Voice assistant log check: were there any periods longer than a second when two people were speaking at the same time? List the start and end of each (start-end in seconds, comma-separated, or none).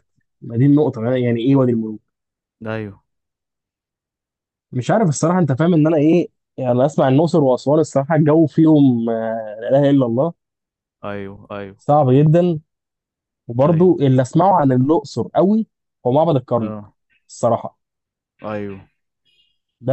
none